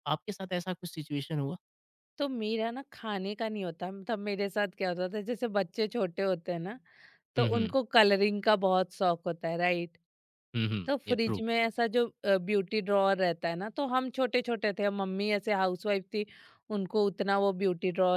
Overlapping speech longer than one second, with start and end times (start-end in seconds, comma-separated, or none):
none